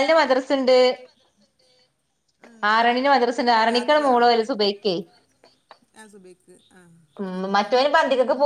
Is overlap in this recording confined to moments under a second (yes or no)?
yes